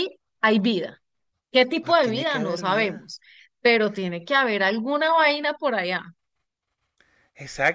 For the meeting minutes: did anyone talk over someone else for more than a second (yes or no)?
yes